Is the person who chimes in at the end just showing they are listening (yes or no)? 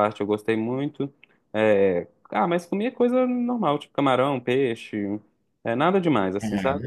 no